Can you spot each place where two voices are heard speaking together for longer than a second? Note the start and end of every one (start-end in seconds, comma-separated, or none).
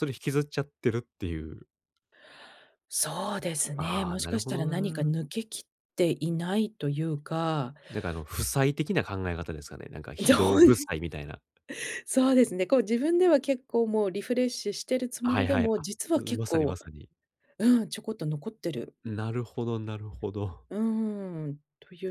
3.8-5.1, 15.2-16.8